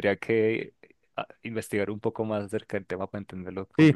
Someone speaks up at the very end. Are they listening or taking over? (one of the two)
taking over